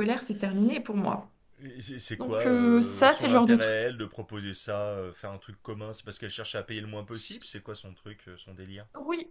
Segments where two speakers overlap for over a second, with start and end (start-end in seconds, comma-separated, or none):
2.2-3.8